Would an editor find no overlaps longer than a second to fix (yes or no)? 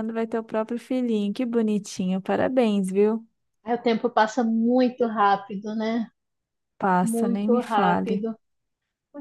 no